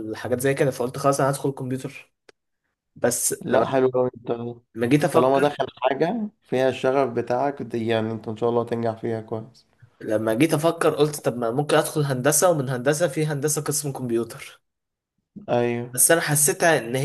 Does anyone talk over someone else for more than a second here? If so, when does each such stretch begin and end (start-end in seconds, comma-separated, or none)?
none